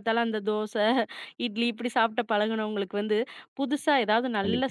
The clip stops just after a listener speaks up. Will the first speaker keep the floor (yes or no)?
yes